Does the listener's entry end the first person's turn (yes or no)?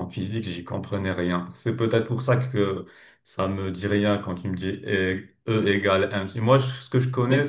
no